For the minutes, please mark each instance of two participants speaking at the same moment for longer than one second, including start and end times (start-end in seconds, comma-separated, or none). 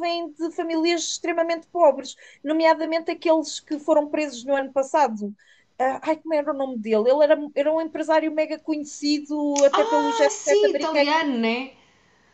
9.7-11.2